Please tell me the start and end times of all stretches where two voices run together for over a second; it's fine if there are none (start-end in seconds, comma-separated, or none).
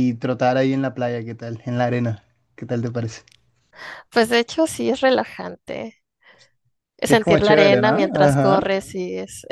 7.0-8.7